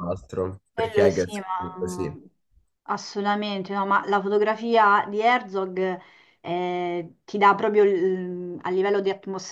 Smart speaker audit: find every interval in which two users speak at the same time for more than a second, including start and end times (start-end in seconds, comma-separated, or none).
0.7-2.1